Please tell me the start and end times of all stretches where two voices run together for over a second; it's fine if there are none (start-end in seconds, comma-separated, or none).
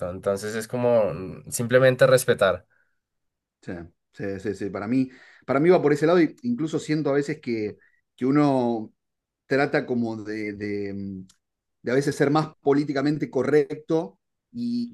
none